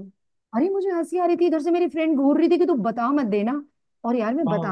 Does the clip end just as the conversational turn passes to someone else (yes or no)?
no